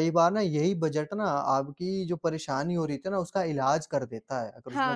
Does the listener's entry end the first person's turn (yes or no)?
yes